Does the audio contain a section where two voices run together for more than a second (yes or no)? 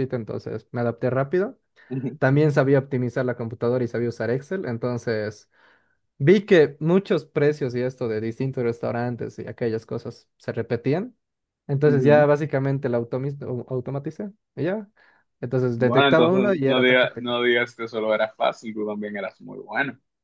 yes